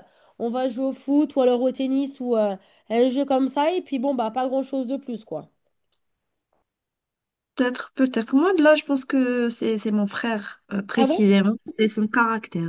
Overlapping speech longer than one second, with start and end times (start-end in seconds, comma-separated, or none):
none